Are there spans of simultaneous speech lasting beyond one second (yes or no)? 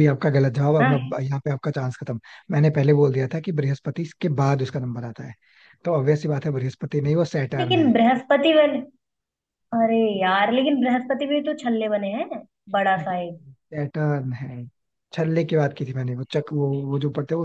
no